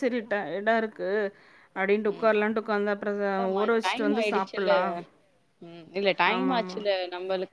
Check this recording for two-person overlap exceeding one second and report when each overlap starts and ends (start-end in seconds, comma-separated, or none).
none